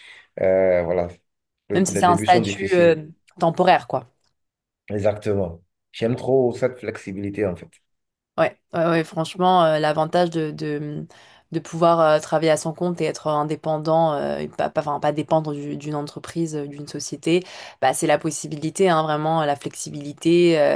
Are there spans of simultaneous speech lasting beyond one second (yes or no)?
yes